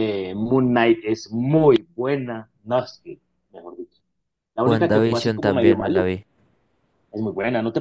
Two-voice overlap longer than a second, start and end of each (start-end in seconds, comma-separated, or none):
4.6-6.1